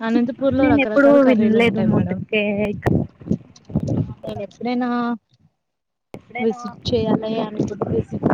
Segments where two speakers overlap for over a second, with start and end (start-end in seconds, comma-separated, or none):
0.6-2.2